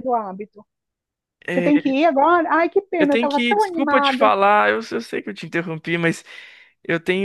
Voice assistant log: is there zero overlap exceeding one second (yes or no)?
no